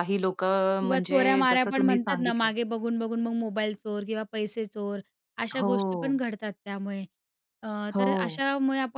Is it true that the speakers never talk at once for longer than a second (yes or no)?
no